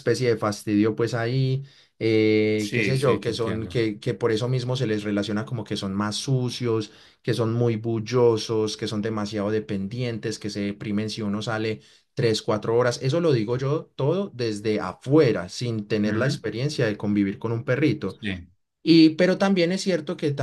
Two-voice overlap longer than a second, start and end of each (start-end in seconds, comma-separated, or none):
2.6-3.9